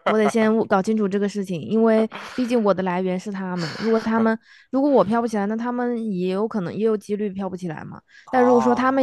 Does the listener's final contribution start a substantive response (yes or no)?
no